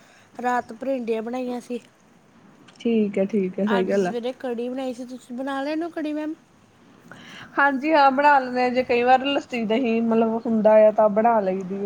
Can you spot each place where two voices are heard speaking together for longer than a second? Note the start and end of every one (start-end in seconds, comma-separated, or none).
none